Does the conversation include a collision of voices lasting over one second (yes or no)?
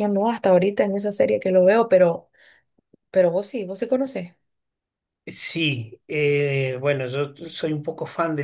no